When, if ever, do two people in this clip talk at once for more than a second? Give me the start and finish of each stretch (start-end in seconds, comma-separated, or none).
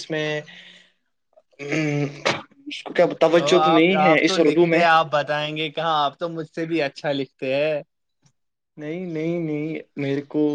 none